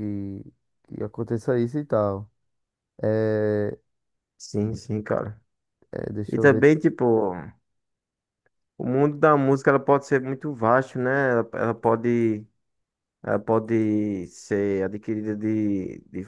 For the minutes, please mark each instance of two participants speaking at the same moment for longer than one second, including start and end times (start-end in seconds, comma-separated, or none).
none